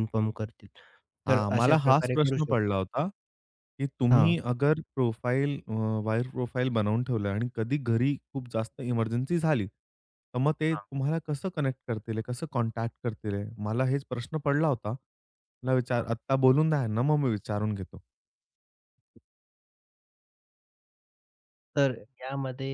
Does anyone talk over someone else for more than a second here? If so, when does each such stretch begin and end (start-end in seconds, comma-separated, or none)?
1.3-2.6